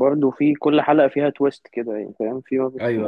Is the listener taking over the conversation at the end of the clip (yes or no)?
no